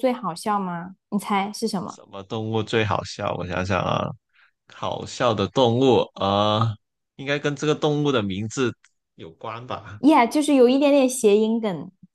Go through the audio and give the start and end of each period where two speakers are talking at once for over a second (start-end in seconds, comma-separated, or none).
none